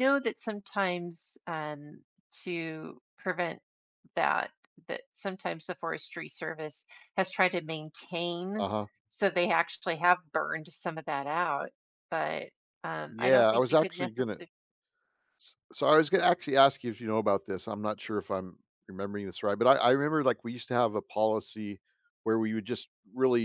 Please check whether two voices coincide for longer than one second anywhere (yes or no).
yes